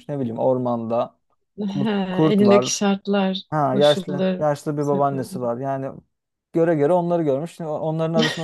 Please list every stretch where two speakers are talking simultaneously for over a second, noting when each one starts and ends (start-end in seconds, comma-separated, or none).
3.5-5.4